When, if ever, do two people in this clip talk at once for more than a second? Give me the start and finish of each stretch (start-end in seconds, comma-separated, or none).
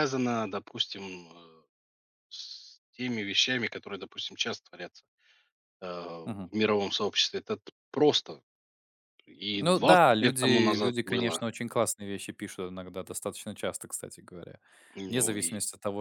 9.6-11.4